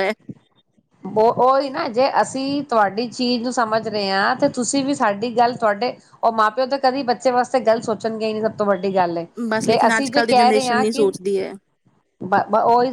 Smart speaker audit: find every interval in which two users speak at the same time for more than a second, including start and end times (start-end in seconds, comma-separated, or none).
9.7-11.1